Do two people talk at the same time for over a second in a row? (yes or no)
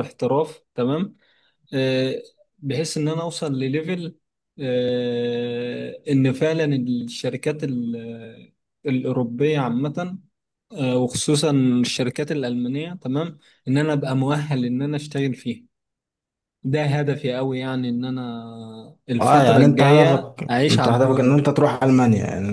yes